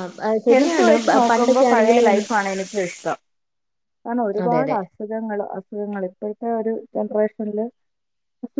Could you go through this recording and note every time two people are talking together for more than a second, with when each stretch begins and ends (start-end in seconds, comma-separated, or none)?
0.5-2.3